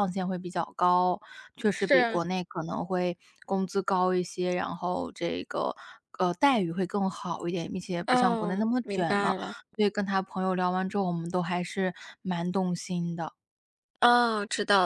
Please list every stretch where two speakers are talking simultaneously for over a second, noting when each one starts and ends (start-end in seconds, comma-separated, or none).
8.1-9.3